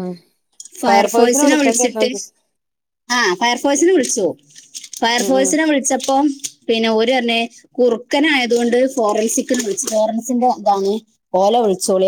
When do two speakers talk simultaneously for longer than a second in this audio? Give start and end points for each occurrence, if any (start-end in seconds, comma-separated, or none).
0.9-2.1